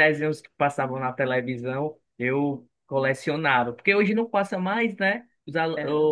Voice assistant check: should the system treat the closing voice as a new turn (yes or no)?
no